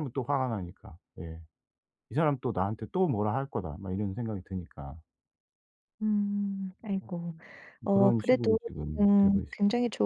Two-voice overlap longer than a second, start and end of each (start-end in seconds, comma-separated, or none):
7.9-9.6